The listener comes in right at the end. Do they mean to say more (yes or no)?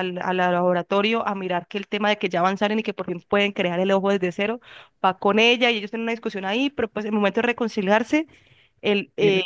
no